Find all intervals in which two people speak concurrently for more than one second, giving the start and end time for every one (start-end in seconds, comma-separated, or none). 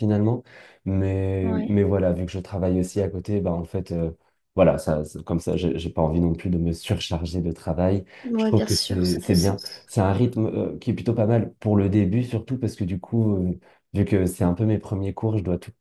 8.2-9.8